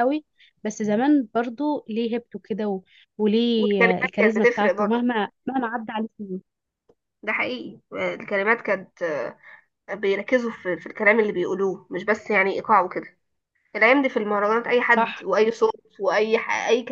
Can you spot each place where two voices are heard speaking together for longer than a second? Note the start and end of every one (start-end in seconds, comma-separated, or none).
3.5-5.1